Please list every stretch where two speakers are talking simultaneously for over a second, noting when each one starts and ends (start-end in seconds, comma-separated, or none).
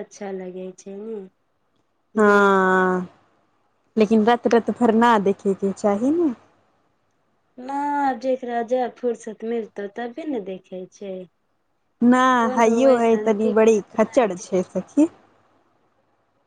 12.6-14.3